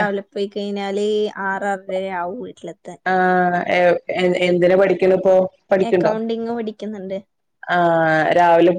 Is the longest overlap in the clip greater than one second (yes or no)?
no